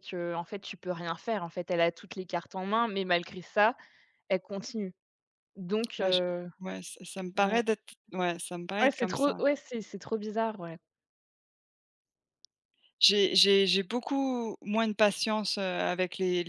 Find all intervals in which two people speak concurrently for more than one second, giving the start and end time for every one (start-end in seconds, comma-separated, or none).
none